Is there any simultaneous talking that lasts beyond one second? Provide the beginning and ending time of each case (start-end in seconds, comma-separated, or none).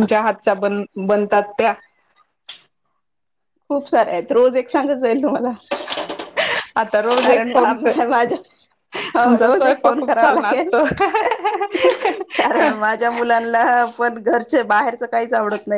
9.3-10.7